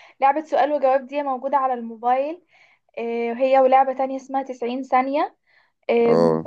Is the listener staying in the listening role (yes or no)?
yes